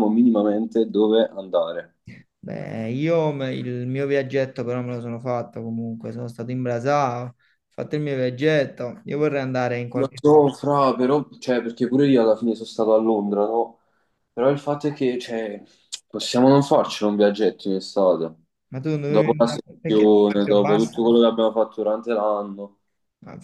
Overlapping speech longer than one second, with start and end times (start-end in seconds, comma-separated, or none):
19.1-21.1